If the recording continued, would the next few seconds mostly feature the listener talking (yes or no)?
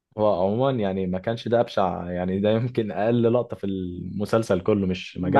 yes